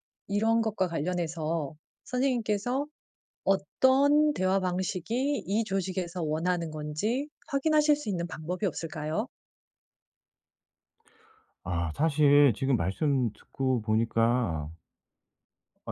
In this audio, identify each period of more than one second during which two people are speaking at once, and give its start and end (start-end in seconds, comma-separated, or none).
none